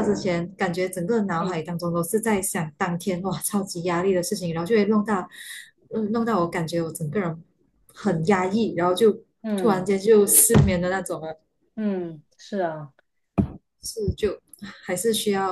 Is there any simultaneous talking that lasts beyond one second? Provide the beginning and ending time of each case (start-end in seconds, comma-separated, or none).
none